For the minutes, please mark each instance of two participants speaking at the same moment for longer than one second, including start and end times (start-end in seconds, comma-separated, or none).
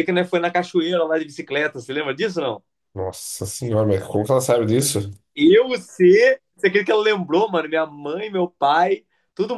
none